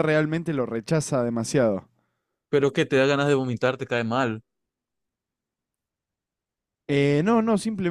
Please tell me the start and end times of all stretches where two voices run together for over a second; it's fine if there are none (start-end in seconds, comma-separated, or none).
none